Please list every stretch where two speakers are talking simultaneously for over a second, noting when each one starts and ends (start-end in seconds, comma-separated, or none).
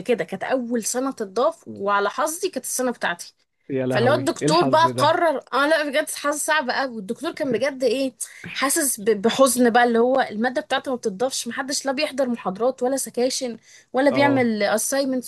3.9-5.2